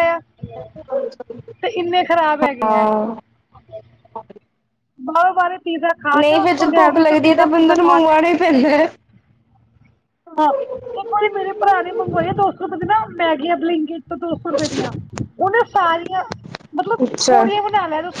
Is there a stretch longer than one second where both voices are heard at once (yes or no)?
yes